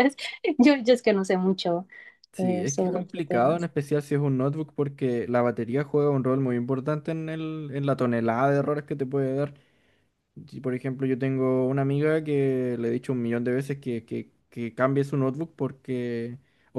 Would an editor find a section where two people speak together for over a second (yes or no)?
yes